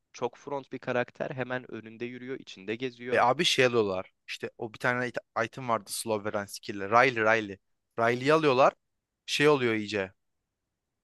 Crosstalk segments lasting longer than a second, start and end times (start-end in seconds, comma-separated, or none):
none